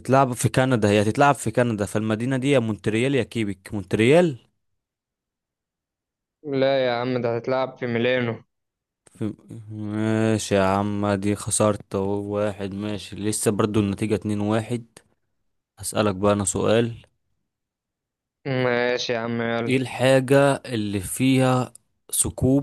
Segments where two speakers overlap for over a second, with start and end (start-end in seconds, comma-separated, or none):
none